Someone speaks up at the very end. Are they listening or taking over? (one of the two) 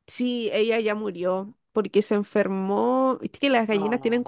listening